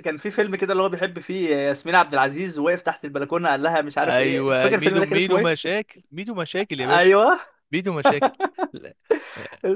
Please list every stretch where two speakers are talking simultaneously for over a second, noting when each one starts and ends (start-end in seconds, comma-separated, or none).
4.0-5.7